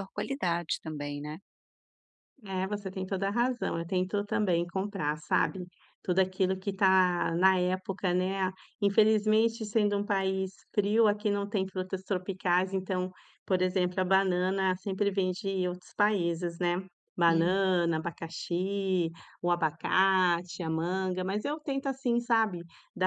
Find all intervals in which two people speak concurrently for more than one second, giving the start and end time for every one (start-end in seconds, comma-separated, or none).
none